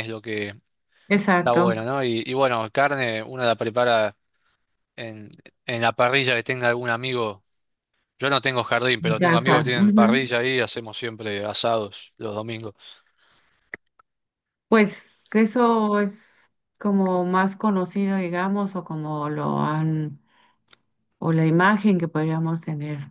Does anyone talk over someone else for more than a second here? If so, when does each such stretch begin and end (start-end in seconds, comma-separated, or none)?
9.0-10.2